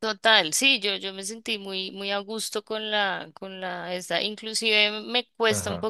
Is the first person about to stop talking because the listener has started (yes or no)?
no